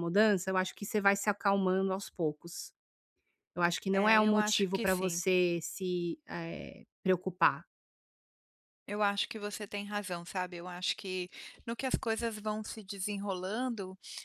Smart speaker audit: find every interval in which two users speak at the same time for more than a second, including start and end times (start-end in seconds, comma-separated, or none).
3.9-5.2